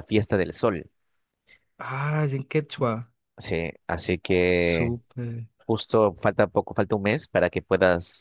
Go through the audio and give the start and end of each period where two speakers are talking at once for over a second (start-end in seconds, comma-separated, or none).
none